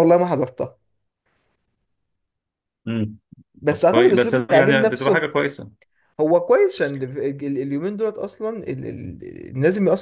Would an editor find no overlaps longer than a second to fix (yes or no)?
no